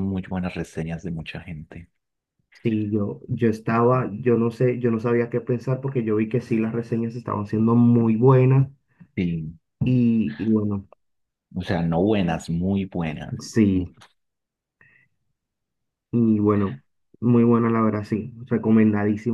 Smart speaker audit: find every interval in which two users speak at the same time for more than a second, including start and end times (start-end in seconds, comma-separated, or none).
none